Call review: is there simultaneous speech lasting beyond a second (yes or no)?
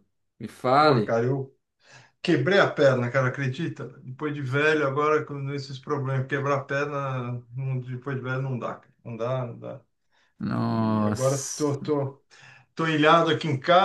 yes